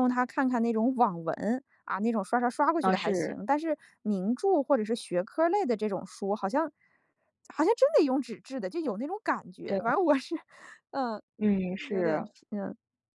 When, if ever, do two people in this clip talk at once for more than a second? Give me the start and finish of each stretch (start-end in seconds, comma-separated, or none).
none